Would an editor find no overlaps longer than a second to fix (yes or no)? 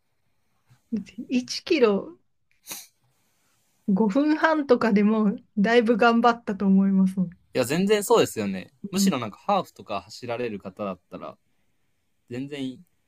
yes